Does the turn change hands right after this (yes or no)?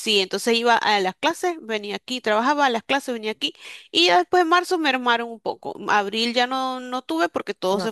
no